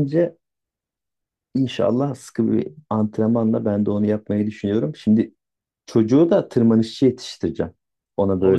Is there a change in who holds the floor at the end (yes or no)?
yes